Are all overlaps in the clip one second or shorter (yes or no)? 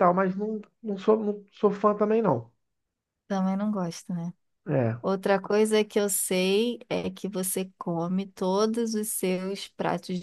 yes